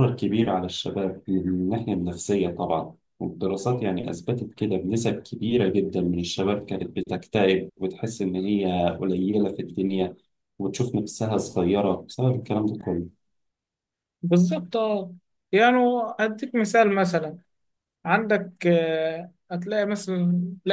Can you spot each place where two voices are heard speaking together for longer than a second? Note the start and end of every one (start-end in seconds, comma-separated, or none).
none